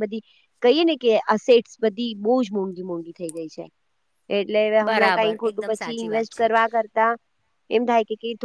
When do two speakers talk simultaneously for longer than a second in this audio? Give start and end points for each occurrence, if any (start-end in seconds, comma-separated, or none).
4.9-6.5